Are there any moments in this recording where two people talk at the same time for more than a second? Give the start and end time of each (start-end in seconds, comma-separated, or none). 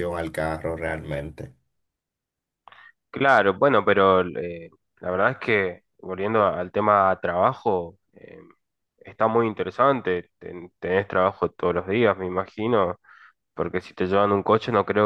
none